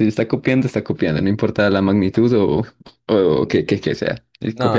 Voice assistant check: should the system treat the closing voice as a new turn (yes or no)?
yes